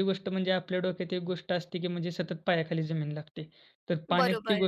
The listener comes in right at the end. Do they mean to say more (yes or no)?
no